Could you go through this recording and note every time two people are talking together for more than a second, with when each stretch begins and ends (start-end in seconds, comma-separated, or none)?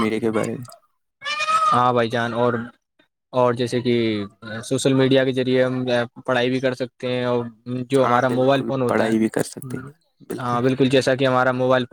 8.0-9.7